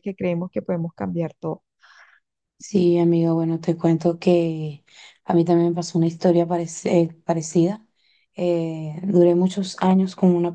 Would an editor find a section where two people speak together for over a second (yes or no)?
no